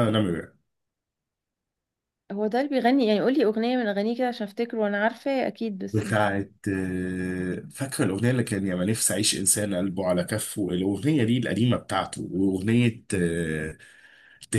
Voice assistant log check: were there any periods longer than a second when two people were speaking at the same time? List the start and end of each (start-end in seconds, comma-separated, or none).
none